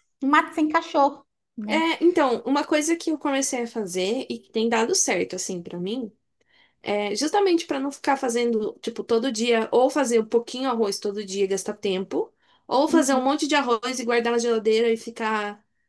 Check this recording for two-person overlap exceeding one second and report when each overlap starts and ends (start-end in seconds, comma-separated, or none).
none